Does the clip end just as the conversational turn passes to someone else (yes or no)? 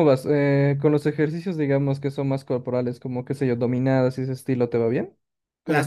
yes